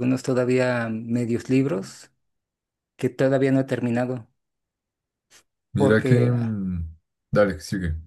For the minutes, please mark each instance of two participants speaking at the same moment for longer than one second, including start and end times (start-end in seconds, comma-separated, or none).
none